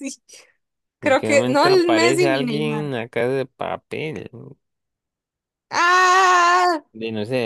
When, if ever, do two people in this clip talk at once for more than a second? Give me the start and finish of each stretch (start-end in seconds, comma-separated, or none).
1.0-2.9